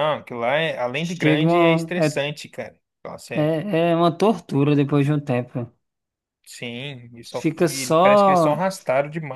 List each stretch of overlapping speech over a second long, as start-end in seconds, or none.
0.9-2.2, 7.3-8.6